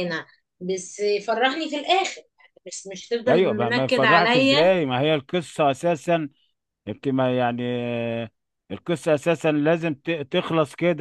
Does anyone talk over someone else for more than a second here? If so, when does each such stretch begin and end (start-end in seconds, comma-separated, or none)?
3.3-4.8